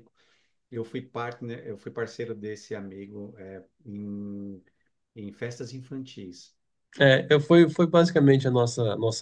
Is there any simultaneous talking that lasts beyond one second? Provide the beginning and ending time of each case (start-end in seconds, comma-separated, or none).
none